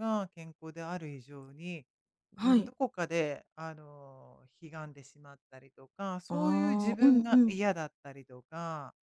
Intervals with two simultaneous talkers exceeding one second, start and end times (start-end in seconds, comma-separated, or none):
6.3-7.6